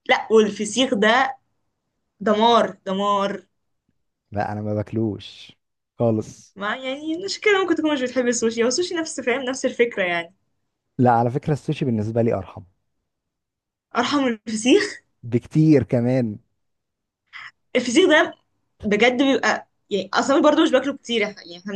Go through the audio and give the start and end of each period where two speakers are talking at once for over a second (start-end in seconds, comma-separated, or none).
none